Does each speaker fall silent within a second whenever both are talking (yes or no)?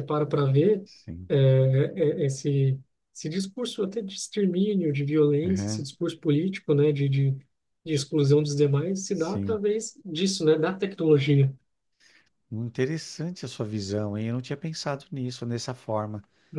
yes